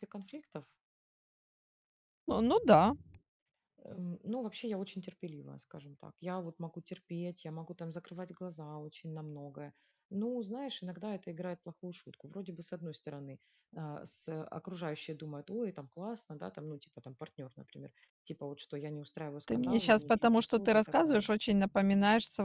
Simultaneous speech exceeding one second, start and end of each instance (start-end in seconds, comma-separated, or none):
19.5-21.3